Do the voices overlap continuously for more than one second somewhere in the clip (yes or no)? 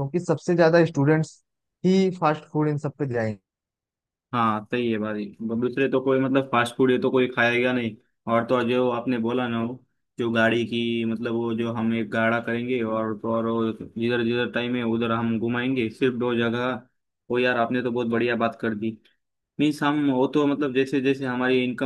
no